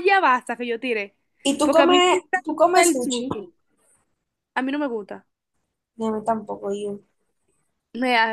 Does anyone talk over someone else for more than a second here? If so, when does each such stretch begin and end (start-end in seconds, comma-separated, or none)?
1.6-3.4